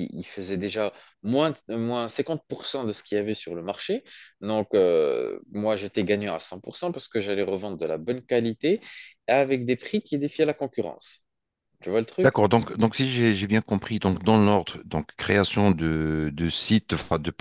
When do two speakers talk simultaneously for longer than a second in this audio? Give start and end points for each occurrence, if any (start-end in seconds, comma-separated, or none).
none